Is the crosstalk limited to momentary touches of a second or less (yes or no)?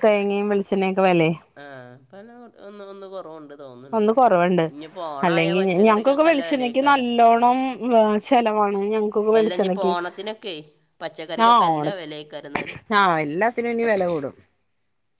no